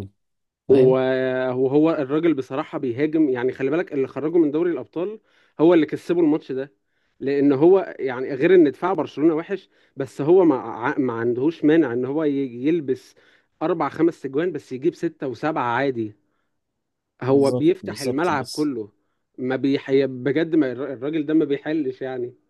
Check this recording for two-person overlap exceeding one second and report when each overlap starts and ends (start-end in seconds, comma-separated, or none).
17.3-18.7